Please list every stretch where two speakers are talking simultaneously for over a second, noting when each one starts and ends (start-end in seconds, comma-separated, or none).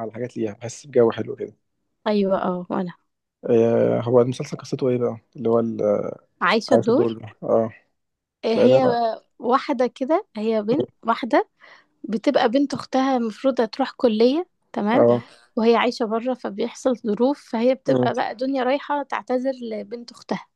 none